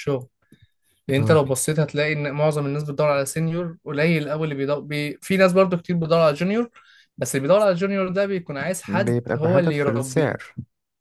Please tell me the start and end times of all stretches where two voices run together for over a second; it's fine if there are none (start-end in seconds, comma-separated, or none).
8.8-10.4